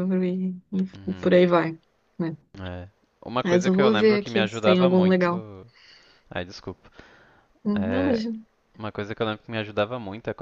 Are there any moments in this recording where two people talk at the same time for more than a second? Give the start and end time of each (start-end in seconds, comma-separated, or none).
3.4-5.3